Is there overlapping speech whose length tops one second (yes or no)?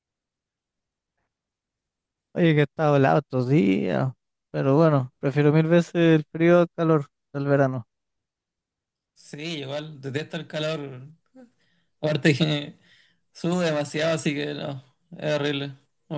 no